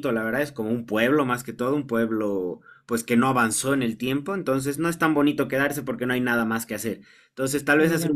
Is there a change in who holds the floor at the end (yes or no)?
no